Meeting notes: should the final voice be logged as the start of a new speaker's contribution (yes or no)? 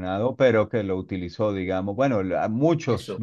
no